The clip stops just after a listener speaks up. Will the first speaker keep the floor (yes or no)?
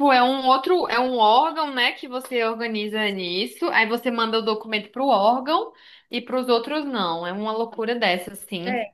yes